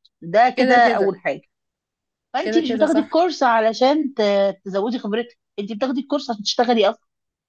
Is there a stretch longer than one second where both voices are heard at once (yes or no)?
yes